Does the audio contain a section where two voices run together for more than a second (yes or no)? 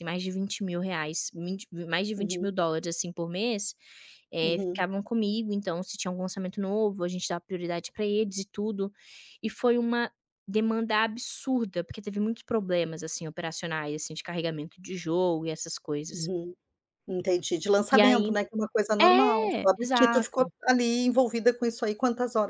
yes